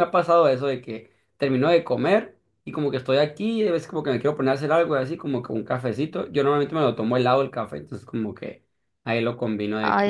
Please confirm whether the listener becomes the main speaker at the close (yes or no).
yes